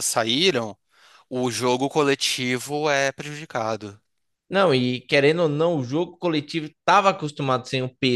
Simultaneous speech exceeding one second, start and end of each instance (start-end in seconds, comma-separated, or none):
none